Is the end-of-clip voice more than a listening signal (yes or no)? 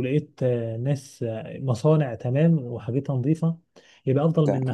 no